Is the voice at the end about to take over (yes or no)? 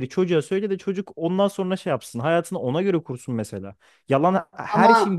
no